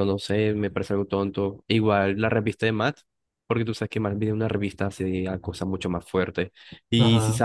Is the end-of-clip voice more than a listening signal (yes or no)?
no